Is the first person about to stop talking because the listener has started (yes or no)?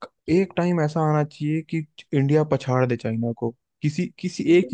yes